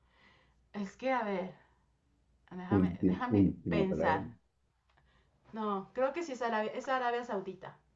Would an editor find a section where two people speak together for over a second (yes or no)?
yes